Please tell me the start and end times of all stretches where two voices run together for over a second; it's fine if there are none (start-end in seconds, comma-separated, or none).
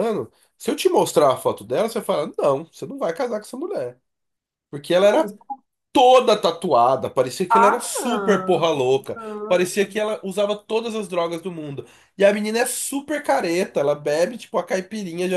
7.5-10.0